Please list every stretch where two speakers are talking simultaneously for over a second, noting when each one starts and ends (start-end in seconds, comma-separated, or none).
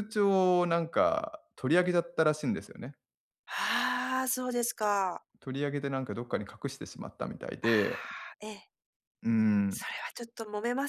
none